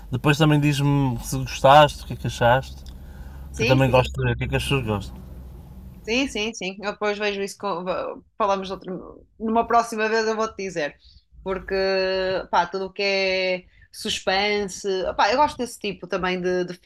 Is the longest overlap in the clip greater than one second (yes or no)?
no